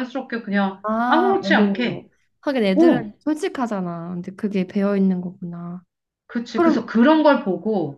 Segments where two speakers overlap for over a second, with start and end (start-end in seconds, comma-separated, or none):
0.8-2.1